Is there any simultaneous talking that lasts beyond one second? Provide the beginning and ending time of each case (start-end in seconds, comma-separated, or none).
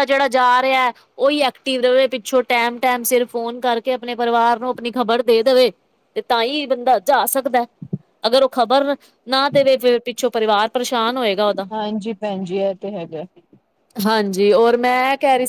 none